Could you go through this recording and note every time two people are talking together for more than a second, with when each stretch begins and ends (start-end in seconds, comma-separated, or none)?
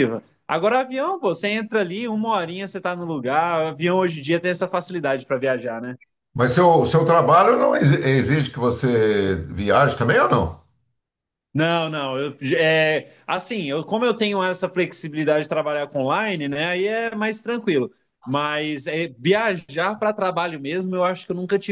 none